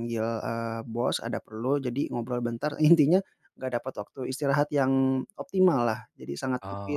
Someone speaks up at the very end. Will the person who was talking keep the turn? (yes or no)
yes